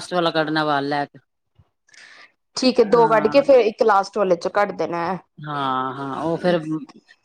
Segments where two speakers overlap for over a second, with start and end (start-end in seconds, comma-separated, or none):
none